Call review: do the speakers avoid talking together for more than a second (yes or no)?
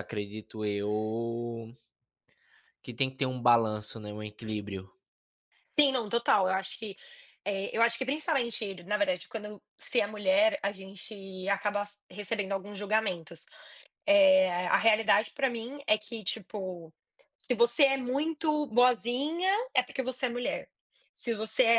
yes